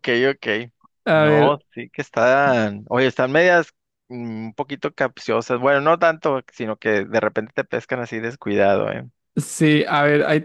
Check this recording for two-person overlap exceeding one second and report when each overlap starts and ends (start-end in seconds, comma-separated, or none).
none